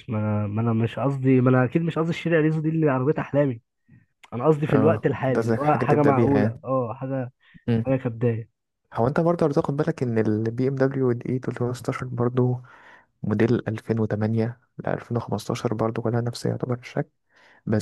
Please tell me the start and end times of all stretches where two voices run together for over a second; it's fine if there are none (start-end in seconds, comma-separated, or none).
4.7-6.5